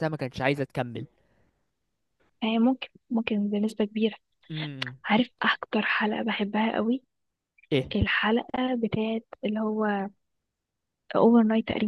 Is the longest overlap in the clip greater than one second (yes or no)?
no